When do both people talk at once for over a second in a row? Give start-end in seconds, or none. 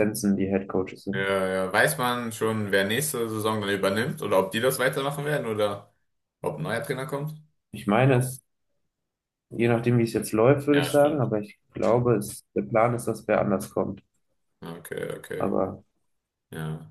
none